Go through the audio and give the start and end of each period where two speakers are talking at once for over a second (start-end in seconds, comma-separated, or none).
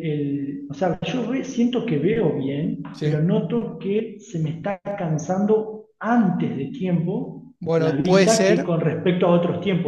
7.6-8.8